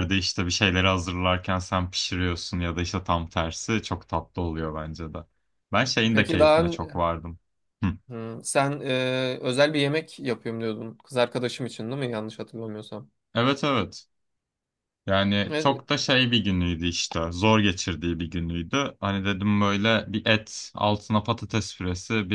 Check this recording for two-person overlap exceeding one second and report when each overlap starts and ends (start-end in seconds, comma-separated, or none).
none